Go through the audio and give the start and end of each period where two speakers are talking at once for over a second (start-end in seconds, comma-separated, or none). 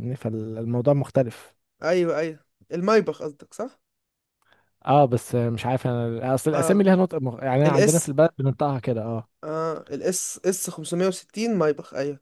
none